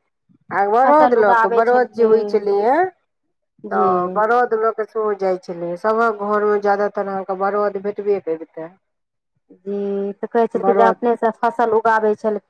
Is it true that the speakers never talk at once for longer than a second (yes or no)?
no